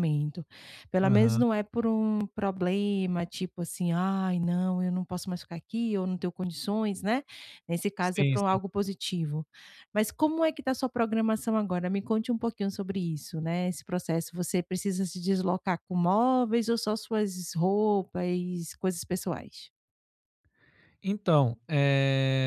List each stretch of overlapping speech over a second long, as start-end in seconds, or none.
none